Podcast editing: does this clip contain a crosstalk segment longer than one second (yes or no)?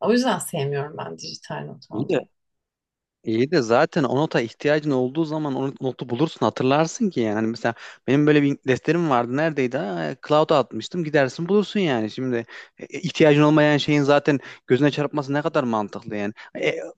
no